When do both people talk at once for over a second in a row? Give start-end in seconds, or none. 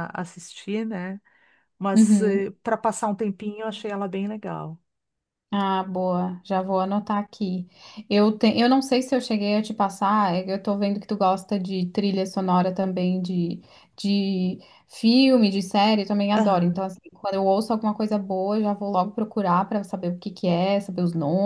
none